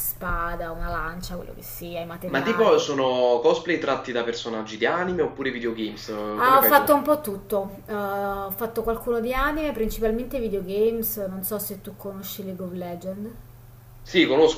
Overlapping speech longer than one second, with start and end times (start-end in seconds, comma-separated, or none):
none